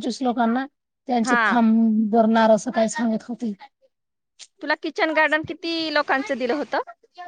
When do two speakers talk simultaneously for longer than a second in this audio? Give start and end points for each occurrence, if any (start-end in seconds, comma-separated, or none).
none